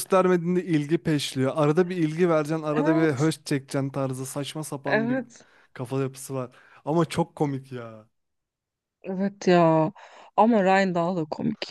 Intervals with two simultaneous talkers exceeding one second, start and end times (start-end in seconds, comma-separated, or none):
none